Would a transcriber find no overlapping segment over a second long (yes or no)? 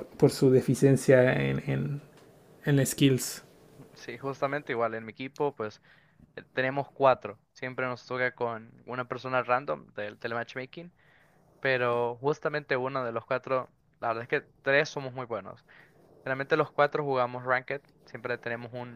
yes